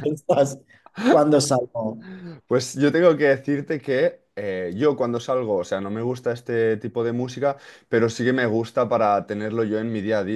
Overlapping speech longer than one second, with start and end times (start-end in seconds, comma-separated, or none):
none